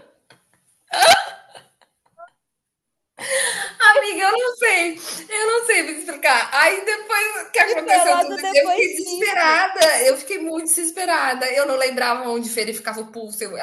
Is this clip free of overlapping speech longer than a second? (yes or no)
no